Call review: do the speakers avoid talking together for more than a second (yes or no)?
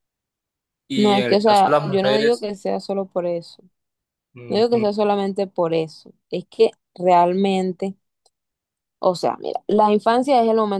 no